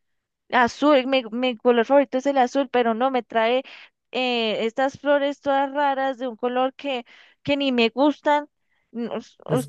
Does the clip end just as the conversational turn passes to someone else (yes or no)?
yes